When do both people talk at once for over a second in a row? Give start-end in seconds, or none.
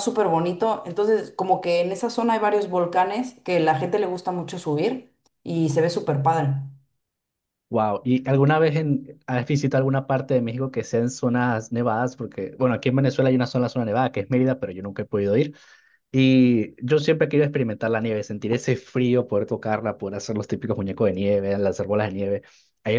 none